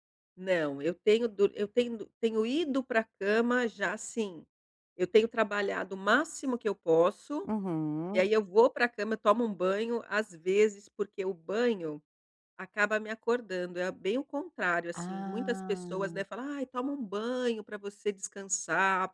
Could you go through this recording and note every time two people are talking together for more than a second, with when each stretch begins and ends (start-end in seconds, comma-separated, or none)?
14.9-16.2